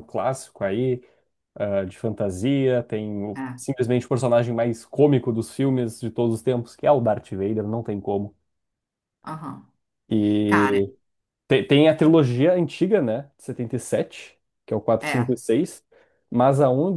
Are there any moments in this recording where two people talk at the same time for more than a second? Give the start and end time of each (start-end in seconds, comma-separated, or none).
none